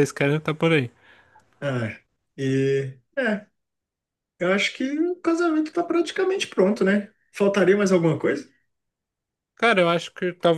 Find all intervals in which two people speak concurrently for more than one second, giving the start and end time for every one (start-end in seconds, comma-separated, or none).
none